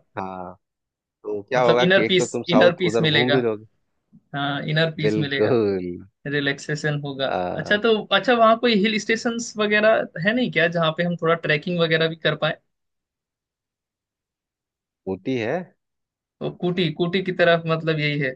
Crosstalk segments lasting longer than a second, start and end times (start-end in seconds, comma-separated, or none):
1.5-3.4